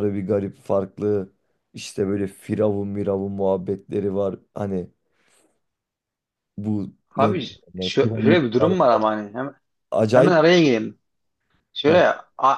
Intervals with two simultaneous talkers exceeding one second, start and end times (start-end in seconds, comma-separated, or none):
7.2-8.7